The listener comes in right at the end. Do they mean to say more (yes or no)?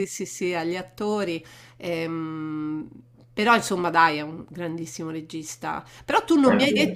no